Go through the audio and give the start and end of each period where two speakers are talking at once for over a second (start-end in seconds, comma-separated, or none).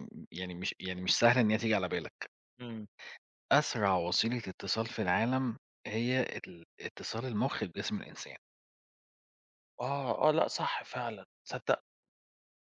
none